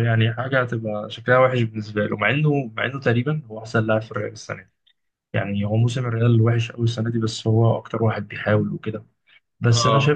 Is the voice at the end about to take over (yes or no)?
no